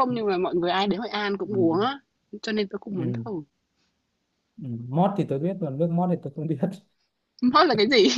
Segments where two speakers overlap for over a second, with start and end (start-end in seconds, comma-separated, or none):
none